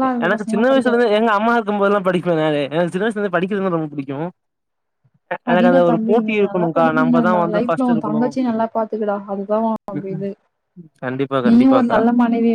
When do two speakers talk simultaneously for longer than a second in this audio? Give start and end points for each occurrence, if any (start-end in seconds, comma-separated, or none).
7.0-8.6